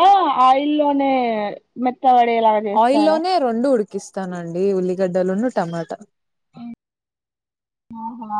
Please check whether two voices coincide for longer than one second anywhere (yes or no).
no